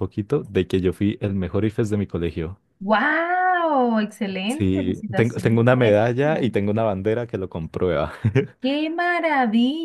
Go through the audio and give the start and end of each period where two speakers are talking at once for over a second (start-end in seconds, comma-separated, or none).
4.5-6.5